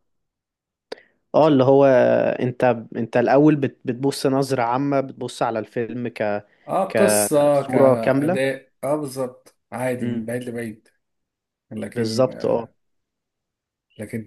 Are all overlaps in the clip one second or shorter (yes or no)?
no